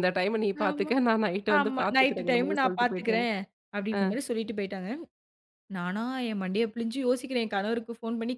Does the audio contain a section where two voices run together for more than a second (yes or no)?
yes